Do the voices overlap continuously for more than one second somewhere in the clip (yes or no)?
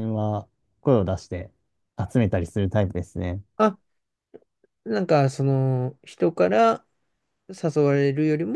no